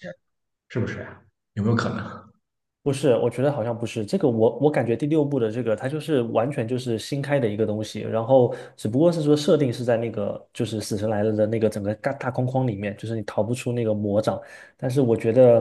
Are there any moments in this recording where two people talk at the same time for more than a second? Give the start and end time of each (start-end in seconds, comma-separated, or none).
none